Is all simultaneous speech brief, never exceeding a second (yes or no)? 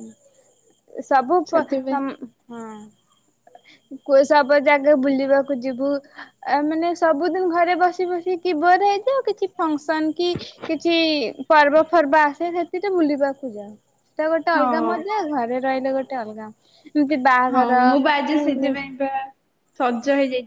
yes